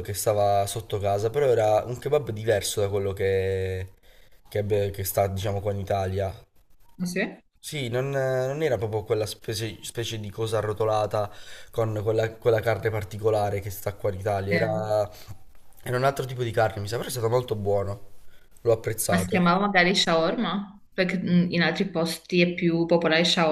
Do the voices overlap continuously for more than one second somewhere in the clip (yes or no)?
no